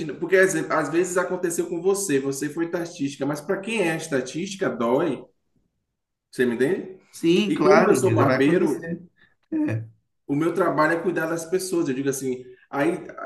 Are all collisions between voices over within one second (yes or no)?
no